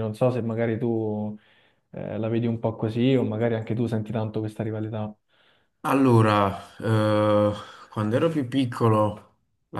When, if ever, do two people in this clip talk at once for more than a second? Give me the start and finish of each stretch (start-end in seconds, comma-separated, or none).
none